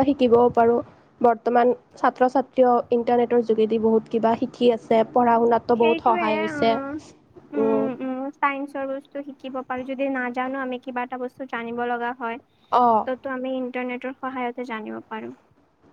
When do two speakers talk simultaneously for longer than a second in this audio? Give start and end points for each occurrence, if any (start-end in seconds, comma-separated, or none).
none